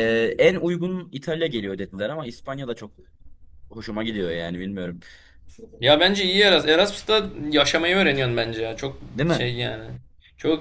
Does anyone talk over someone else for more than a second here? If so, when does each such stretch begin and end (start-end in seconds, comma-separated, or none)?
none